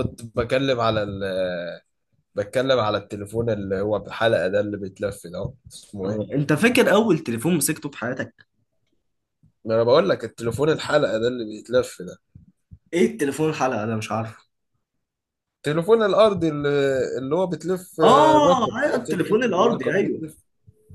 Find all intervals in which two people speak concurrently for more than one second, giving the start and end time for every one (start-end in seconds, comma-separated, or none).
18.0-20.2